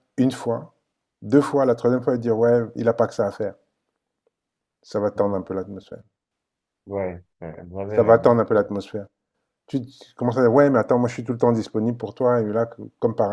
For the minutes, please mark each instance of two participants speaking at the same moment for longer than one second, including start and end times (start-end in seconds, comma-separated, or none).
none